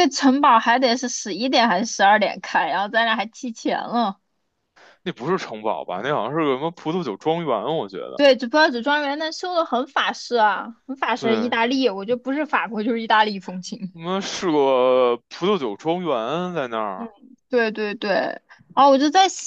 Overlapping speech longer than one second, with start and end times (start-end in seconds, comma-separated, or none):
none